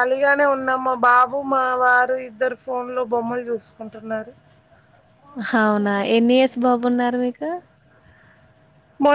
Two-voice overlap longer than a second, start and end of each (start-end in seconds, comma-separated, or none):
none